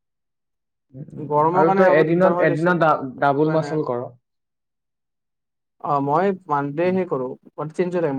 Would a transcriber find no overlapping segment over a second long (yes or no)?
no